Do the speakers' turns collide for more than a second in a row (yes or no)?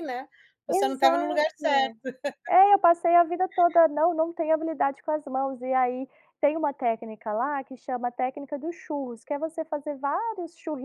yes